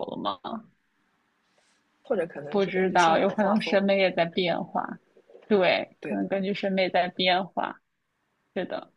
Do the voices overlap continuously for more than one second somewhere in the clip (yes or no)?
yes